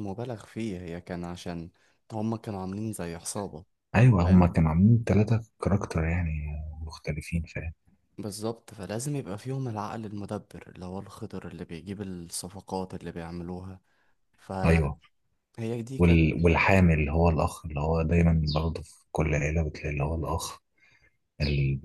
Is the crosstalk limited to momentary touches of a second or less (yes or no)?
yes